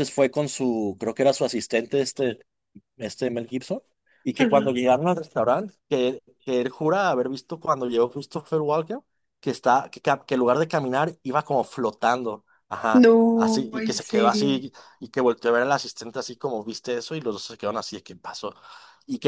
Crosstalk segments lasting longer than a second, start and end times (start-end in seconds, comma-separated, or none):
12.9-14.6